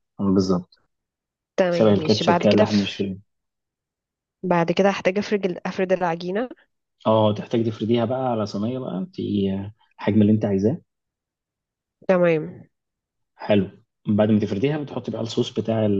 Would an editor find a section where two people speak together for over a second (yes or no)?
yes